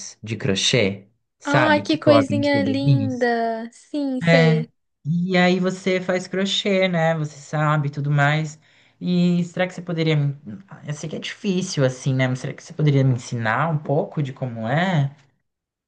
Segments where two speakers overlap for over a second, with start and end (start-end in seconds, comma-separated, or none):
1.4-3.3